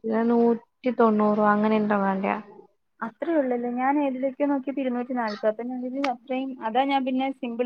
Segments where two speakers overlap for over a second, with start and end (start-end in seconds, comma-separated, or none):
none